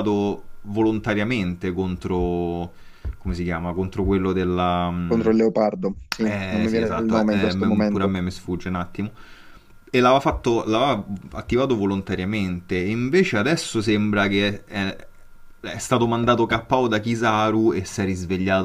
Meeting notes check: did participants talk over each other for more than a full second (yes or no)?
yes